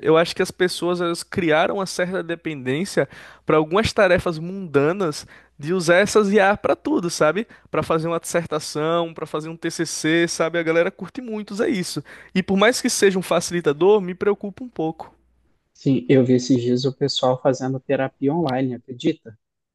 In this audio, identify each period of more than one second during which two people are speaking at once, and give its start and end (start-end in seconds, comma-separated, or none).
none